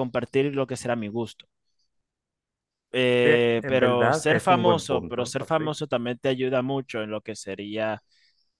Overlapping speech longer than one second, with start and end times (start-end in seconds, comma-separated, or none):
3.2-5.7